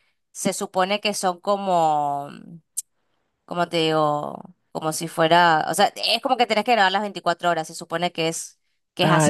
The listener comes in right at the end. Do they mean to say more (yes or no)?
yes